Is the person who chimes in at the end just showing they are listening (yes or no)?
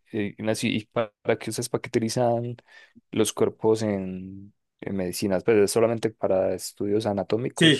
no